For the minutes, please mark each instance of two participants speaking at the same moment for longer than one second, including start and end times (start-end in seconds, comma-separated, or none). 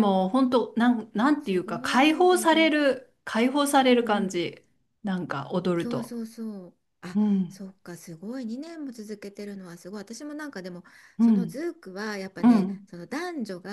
1.4-2.7